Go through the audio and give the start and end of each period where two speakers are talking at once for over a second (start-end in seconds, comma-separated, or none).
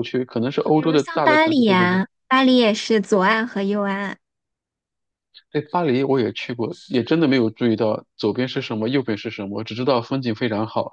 0.7-2.0